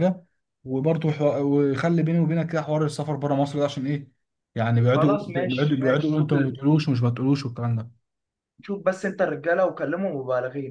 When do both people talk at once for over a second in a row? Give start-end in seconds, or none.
4.9-6.5